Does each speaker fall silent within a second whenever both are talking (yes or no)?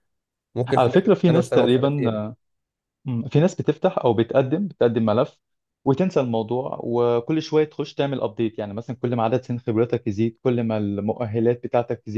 no